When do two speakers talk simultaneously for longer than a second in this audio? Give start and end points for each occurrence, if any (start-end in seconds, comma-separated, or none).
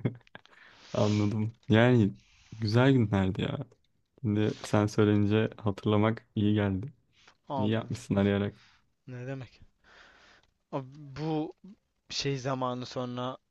none